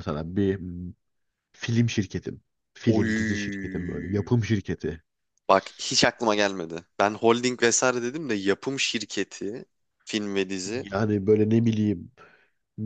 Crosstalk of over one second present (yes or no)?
yes